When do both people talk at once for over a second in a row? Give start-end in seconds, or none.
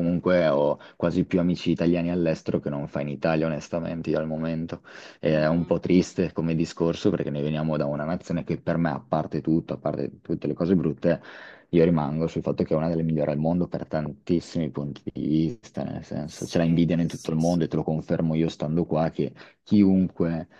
16.2-17.6